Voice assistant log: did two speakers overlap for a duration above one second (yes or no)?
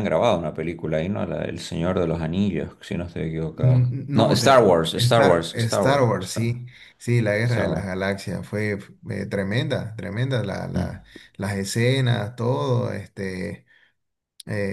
yes